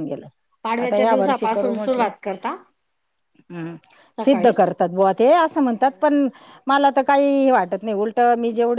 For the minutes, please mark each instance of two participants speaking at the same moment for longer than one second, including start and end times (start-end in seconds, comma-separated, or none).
0.8-2.1